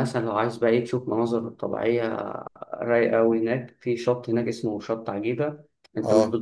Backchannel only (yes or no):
yes